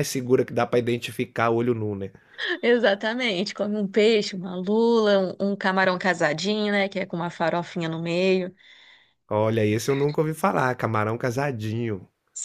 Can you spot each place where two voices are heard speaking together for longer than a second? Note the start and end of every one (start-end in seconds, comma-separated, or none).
none